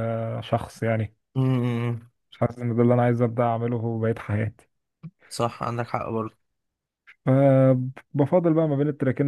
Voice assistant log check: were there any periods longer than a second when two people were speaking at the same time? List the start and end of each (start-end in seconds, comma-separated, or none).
none